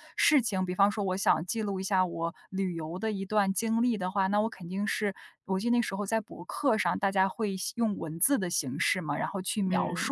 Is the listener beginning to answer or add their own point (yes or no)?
no